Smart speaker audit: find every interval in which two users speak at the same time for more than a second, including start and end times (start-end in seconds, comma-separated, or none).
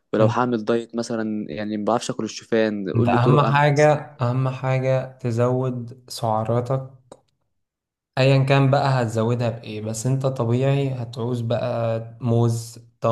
3.0-4.5